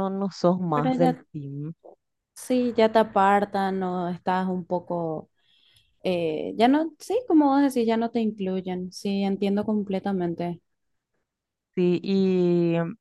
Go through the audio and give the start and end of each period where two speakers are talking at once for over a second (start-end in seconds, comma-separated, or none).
none